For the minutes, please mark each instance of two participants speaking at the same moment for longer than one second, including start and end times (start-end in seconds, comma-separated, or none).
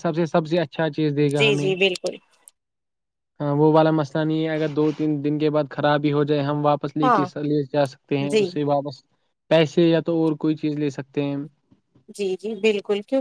none